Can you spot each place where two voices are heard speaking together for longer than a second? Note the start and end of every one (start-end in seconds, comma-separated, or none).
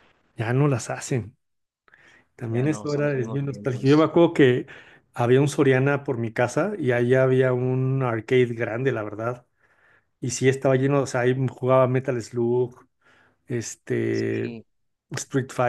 2.5-4.1